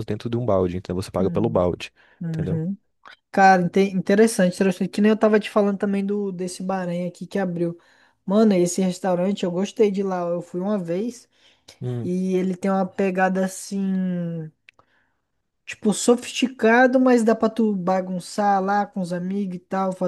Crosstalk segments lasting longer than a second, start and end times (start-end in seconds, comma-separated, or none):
none